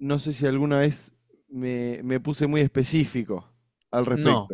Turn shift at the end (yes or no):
yes